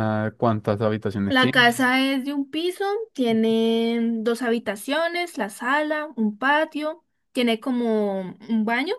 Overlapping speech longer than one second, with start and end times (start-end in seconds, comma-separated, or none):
none